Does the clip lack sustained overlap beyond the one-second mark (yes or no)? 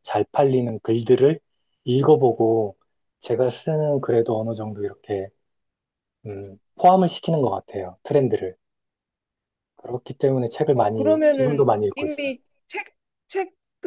no